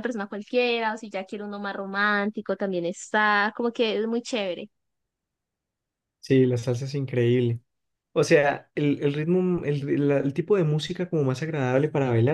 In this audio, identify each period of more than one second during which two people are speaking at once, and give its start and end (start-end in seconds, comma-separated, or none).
none